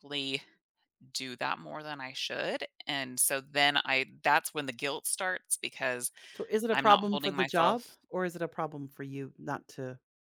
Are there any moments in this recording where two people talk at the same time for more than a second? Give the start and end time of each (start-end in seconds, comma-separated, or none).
6.7-8.0